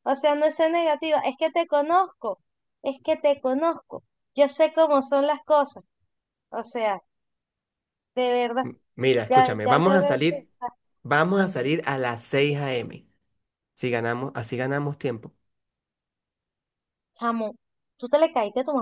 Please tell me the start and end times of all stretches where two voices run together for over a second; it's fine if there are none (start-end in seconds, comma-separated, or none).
9.3-10.5